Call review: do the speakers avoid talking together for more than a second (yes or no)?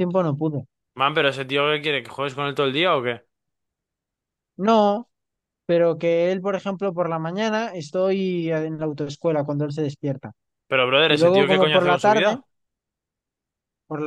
no